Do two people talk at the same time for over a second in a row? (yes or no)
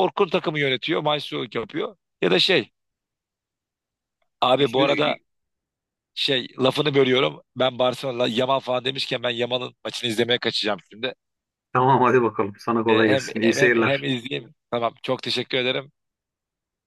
yes